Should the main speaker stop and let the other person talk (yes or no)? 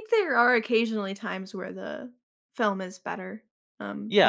yes